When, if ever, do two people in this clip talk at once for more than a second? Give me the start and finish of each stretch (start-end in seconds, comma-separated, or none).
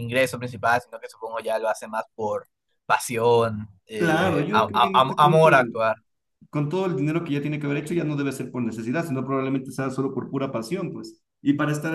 4.0-5.5